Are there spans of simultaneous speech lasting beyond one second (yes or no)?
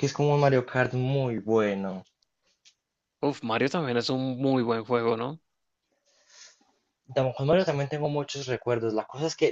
no